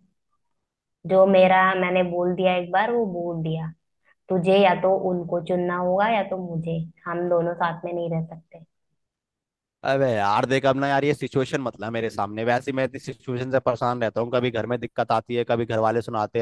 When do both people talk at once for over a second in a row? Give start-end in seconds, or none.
none